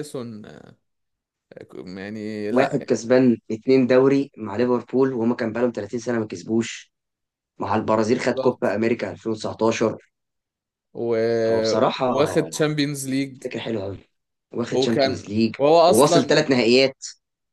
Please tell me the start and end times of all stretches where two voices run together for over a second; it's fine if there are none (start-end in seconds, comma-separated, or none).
14.7-16.5